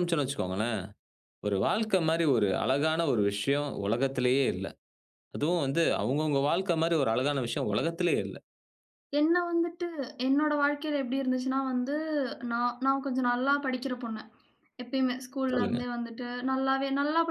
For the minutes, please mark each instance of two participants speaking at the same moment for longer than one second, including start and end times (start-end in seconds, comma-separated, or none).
none